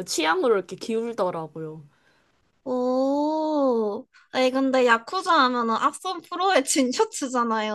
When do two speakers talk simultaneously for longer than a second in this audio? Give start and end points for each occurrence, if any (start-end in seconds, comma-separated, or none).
none